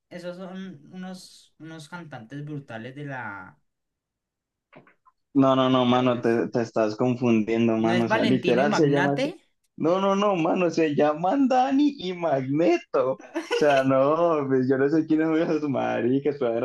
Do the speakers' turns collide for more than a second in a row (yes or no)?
yes